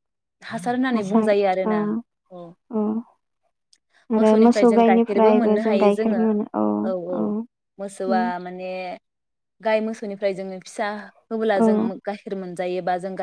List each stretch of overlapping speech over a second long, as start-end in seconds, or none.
4.2-6.2